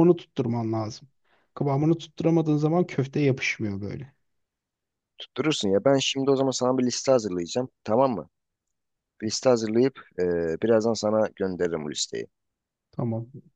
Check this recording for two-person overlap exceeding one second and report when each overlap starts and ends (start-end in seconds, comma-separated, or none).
none